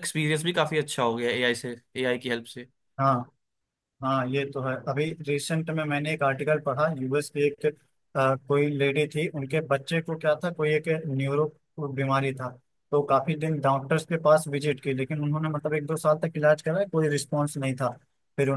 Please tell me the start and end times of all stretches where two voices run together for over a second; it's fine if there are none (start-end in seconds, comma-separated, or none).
none